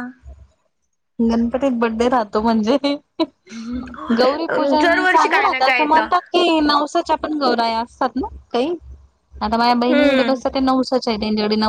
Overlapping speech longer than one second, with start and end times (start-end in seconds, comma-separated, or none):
4.5-6.1